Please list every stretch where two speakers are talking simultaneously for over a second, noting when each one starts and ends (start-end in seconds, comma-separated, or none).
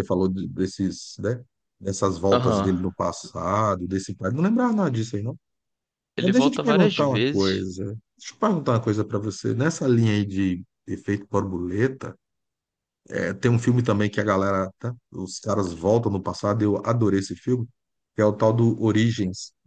6.2-7.7